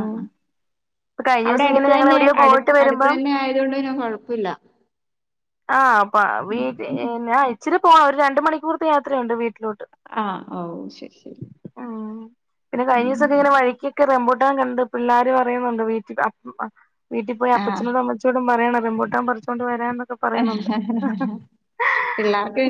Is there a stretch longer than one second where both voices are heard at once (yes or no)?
yes